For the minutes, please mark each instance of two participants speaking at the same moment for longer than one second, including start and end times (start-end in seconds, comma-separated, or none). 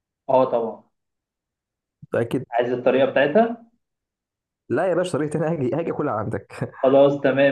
none